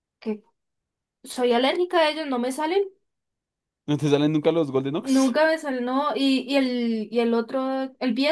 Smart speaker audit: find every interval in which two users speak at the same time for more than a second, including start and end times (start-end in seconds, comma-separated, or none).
none